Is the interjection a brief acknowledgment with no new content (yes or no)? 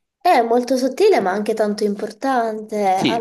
no